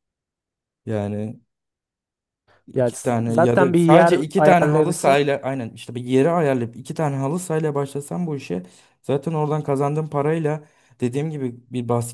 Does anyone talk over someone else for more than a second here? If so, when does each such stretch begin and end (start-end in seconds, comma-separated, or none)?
2.8-5.2